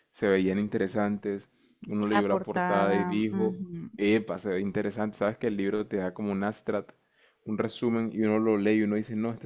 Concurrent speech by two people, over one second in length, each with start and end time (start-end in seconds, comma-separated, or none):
2.1-3.6